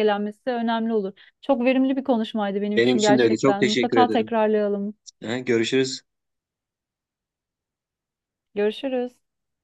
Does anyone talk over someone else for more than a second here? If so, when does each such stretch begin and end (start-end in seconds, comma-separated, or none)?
2.8-4.4